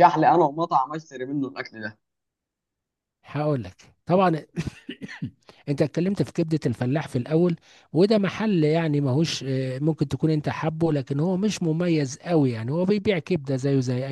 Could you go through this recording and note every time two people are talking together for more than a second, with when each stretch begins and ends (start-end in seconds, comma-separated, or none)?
none